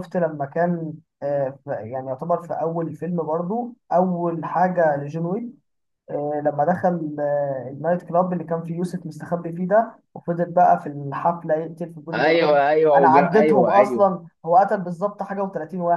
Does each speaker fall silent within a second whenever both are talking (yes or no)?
no